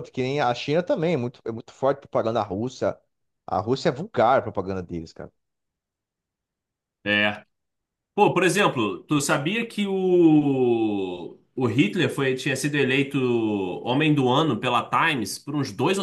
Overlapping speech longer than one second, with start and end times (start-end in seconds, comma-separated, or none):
none